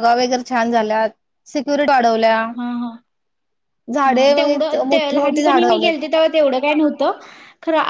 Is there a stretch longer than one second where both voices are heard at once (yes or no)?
yes